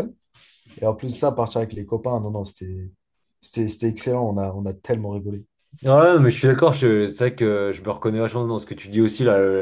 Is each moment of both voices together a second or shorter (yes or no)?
yes